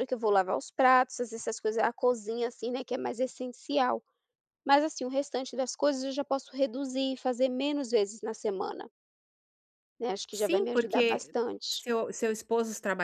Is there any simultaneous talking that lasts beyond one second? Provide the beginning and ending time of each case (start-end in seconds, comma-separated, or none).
10.3-11.8